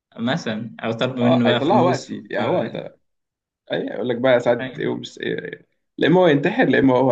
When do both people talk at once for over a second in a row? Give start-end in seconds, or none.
1.2-2.6